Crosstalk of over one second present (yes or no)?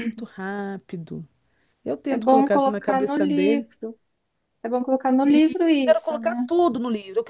yes